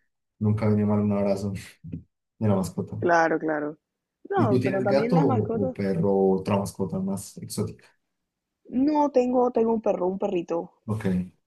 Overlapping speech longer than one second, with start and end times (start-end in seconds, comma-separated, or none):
4.3-5.8